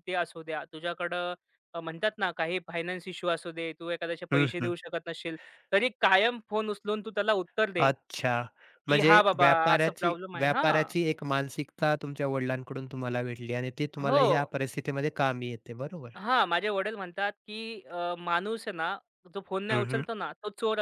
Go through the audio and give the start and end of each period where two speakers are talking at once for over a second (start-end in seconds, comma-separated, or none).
8.9-10.9